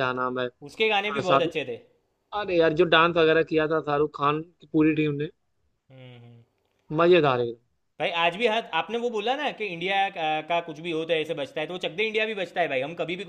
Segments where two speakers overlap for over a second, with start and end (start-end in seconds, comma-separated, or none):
none